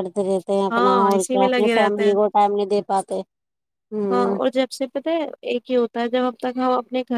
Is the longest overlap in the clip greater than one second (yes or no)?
yes